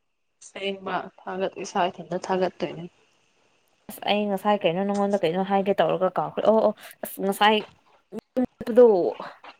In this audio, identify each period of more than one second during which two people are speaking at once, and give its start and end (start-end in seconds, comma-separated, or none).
none